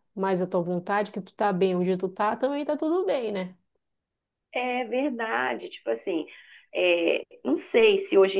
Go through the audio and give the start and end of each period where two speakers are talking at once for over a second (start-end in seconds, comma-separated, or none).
none